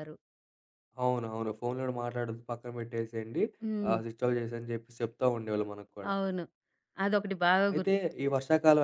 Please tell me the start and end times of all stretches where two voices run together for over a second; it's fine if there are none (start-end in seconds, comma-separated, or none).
none